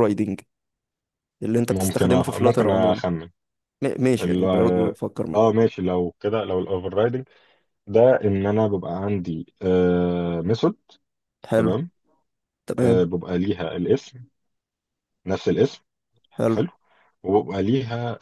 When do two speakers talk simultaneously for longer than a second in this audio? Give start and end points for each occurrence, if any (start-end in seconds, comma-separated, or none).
1.7-3.0